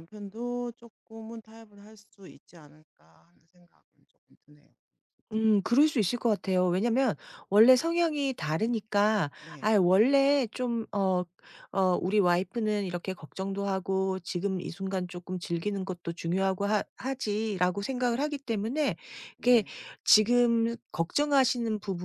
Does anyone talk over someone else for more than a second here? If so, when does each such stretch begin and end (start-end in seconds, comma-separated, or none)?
none